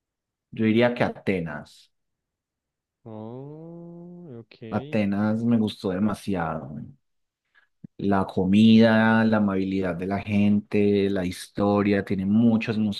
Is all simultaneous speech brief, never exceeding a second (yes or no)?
yes